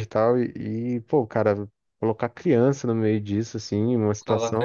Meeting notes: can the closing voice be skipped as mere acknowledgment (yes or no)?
yes